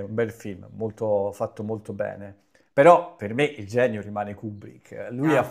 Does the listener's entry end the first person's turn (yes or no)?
no